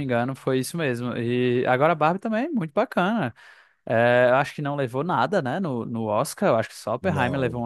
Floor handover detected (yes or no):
no